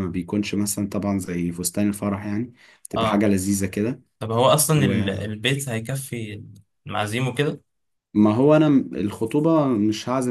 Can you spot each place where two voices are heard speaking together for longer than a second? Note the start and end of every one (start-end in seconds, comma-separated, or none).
none